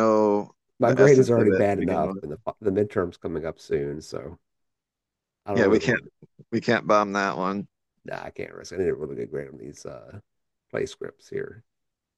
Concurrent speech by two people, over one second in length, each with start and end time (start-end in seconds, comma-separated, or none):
0.8-2.2